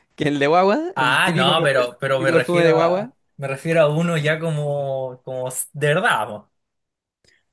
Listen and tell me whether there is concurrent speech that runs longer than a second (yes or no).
yes